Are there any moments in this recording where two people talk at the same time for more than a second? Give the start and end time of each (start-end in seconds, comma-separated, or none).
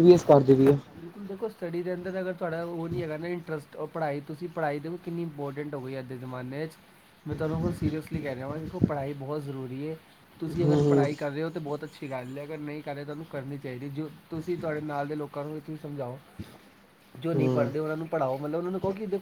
none